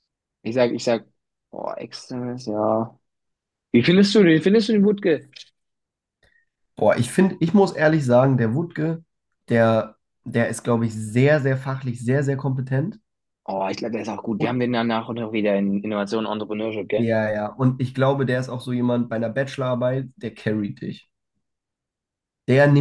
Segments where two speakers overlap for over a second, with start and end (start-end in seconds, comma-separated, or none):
none